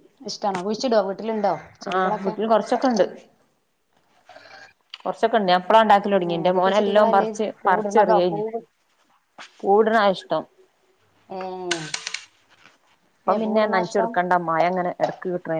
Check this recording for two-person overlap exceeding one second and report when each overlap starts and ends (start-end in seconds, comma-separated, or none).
6.3-8.4